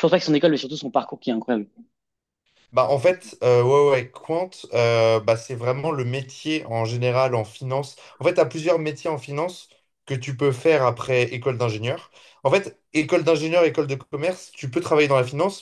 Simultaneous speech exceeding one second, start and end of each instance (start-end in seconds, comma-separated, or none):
none